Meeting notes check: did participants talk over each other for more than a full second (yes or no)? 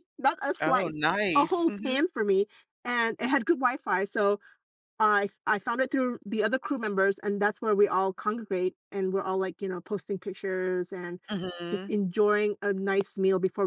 yes